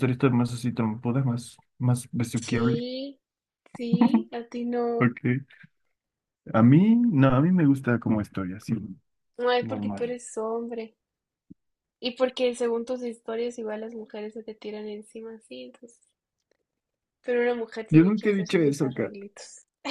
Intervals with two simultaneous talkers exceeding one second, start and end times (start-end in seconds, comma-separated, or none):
17.9-19.1